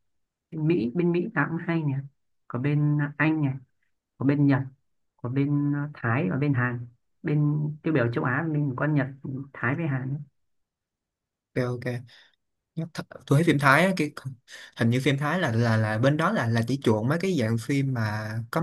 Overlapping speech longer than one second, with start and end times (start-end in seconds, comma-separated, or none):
none